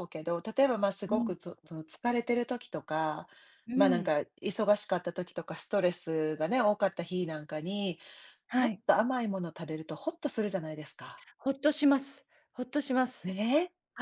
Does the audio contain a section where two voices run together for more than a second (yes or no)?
no